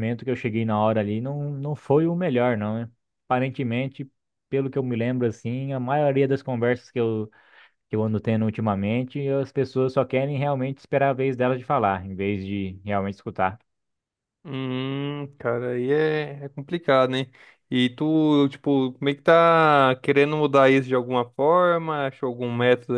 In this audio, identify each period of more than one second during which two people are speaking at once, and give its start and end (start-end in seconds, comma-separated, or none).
none